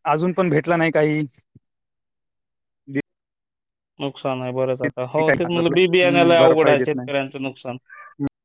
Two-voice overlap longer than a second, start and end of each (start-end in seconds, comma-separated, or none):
5.0-7.1